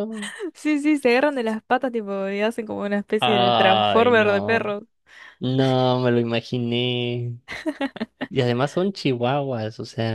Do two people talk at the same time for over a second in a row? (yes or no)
yes